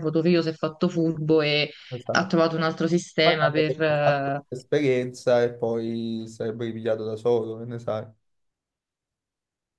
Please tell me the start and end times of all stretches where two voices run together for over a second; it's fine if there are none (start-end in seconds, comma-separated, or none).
3.2-4.4